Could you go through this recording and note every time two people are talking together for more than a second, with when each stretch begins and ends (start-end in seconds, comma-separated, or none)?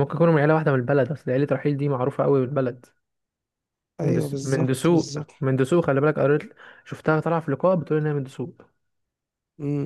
4.0-5.3